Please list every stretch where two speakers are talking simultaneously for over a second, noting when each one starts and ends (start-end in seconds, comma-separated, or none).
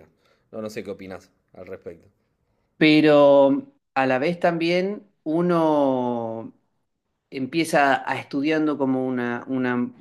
none